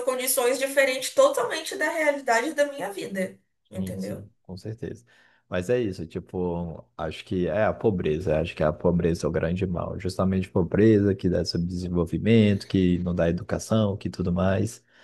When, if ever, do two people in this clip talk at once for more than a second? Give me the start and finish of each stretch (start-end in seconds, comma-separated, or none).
none